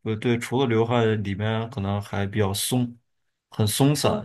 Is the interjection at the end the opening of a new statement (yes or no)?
no